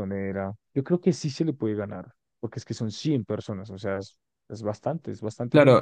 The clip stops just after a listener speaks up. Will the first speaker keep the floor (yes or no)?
no